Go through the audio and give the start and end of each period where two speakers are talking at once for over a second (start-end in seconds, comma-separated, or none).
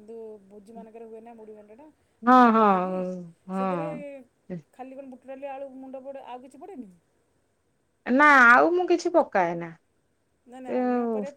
none